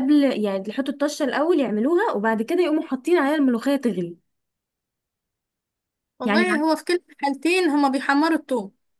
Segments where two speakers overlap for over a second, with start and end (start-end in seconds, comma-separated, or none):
none